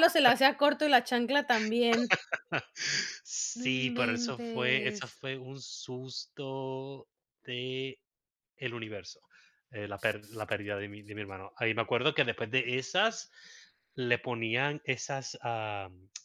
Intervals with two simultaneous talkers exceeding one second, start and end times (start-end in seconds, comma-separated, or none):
3.6-5.2